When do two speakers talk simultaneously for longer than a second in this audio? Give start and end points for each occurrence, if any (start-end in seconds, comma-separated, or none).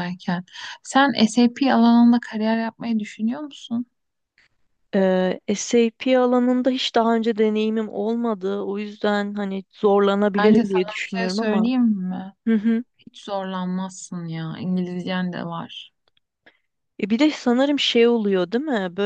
10.4-11.7